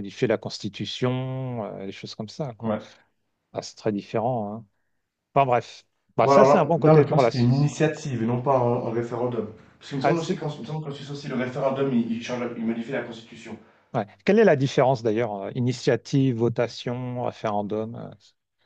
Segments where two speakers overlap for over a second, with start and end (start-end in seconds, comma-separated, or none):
6.2-7.8